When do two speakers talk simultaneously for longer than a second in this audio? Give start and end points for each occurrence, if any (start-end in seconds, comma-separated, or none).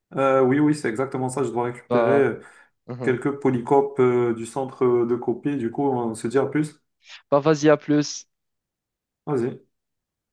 none